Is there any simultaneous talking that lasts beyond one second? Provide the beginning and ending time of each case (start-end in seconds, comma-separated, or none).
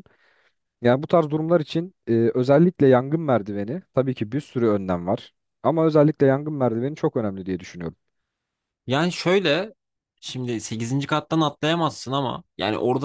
none